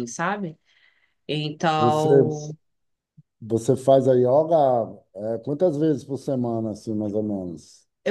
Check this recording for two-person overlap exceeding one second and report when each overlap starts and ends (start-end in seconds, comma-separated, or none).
none